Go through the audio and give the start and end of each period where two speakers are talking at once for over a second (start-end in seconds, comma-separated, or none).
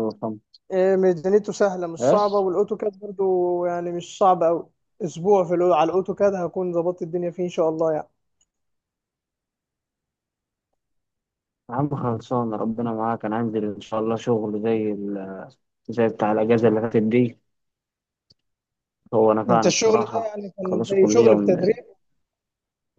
19.5-21.7